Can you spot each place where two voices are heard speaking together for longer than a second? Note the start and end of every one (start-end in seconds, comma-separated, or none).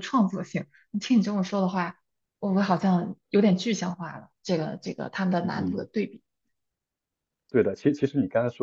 none